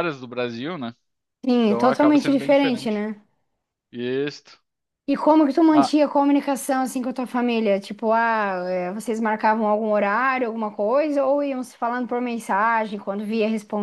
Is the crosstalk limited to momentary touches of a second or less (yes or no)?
no